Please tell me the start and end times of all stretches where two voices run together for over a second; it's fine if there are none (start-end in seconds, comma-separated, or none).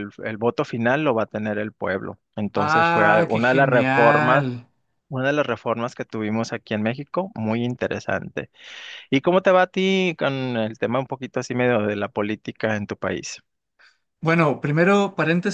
2.5-4.5